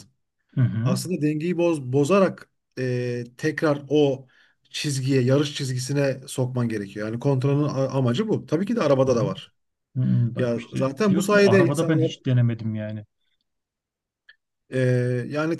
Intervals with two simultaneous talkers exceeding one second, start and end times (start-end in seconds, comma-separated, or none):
10.4-12.1